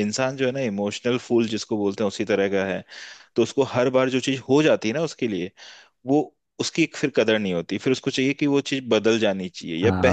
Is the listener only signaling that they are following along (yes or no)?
no